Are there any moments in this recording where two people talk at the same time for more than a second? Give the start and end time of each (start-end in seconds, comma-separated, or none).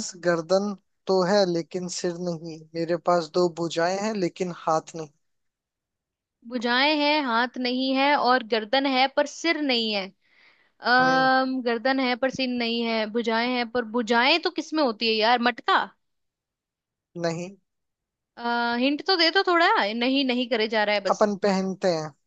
none